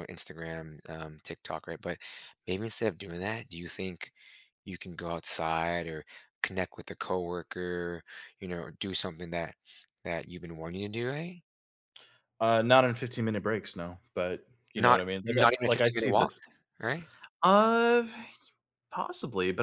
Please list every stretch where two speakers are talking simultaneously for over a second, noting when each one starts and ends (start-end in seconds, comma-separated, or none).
14.8-16.3